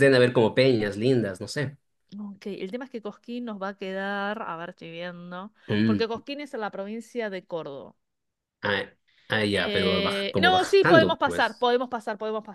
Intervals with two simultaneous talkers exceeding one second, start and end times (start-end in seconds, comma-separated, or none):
9.7-11.7